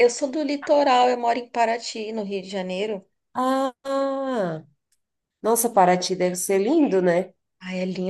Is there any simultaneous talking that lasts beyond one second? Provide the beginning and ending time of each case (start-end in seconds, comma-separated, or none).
none